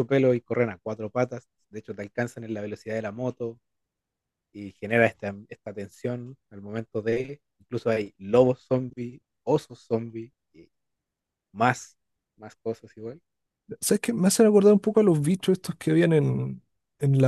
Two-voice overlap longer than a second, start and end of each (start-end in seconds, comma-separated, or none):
none